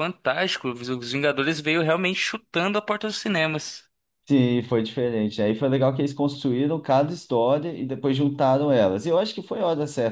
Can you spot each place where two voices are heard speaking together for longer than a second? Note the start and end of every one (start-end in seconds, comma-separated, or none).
none